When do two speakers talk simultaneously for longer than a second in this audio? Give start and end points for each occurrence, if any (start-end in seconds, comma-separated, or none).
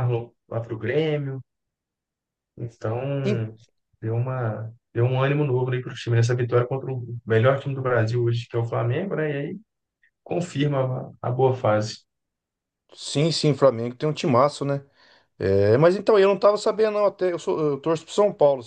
none